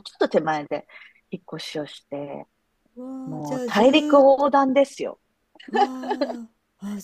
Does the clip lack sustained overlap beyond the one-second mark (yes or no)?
no